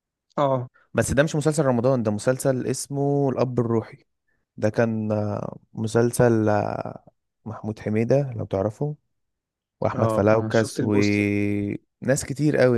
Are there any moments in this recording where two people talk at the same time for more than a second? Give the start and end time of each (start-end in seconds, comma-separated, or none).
9.9-11.2